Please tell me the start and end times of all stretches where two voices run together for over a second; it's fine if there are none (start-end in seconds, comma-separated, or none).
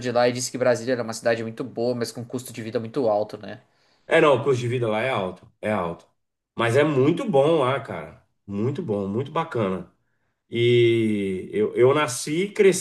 none